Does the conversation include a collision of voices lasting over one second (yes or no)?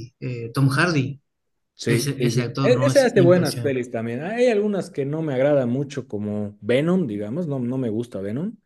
yes